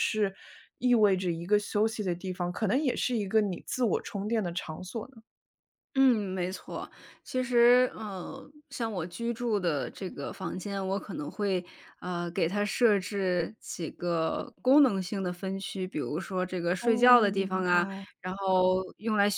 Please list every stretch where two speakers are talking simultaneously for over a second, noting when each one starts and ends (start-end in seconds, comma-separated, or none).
16.8-18.1